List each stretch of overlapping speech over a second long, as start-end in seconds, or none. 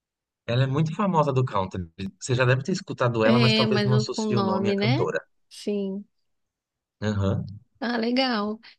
3.2-5.1